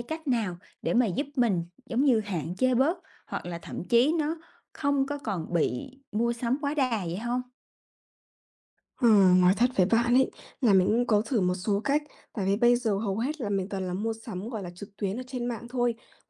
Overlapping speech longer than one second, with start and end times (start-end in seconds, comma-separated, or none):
none